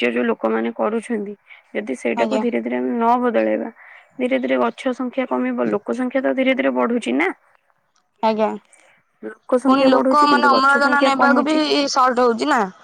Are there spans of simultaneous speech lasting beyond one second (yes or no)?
yes